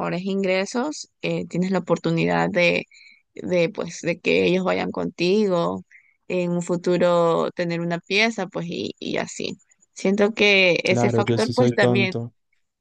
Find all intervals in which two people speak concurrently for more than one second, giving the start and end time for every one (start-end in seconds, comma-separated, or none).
10.8-12.2